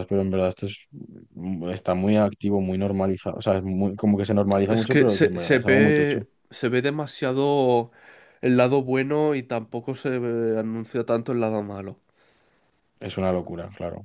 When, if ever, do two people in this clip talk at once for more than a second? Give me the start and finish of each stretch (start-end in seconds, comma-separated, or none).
4.7-6.3